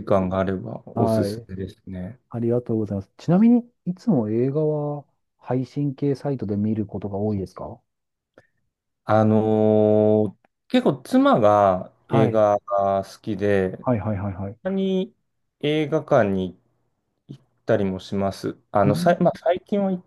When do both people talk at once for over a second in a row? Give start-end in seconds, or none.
none